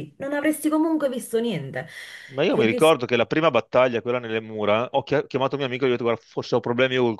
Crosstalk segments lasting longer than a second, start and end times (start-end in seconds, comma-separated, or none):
none